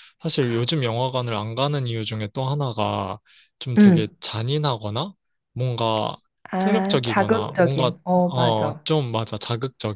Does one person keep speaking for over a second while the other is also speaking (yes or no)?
yes